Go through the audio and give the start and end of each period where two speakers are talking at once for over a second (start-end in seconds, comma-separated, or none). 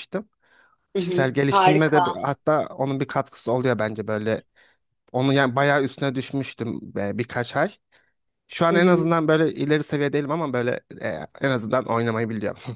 1.0-2.2